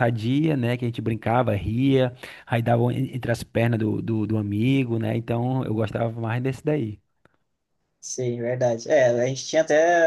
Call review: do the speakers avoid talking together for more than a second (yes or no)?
yes